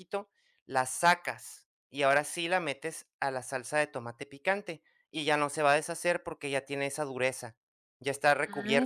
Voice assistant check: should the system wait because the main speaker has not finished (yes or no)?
no